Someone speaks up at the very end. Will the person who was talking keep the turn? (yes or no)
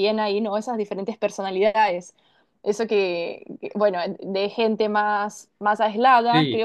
yes